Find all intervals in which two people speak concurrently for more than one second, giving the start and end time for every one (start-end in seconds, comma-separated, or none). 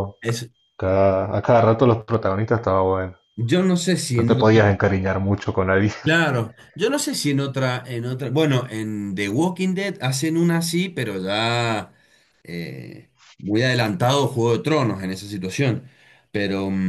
none